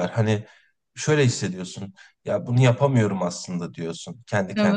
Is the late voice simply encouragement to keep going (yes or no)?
yes